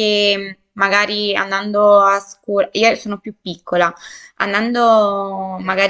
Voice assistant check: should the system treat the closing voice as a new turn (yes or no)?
no